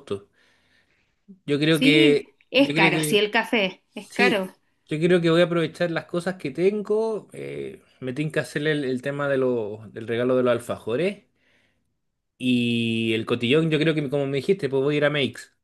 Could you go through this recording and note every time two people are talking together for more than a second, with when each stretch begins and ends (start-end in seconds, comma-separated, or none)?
1.7-3.2